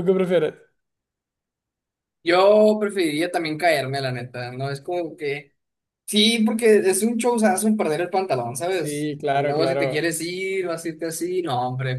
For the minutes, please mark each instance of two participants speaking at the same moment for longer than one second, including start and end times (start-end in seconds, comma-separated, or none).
8.7-10.1